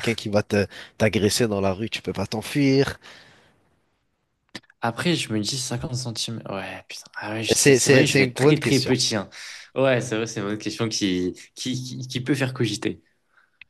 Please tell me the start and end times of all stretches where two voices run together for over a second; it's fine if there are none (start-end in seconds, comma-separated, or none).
7.5-9.0